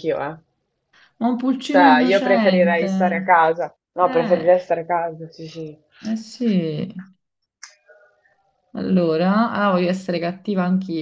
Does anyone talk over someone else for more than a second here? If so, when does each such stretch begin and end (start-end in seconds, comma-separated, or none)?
1.7-2.9